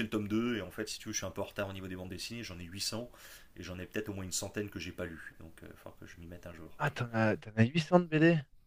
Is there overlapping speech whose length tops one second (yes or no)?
no